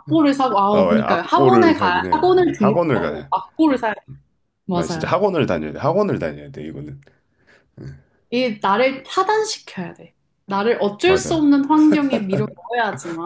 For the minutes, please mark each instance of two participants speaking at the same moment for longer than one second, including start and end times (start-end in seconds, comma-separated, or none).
0.7-3.3